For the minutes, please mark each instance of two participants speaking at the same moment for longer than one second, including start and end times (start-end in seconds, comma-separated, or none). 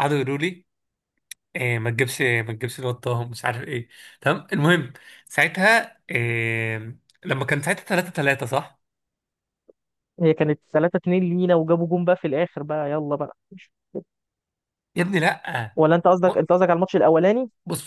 none